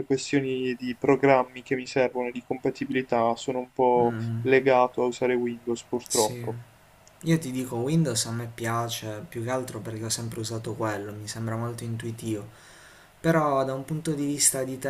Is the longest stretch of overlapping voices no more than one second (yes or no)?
yes